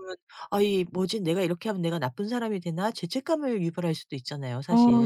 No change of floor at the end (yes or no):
no